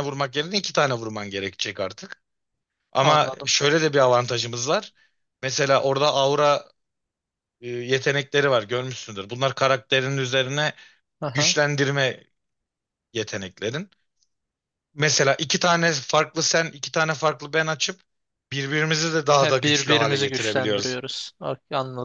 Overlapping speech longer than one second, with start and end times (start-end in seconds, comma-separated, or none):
19.4-21.0